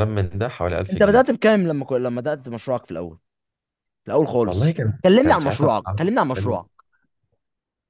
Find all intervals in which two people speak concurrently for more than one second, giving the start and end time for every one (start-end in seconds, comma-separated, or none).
4.4-6.6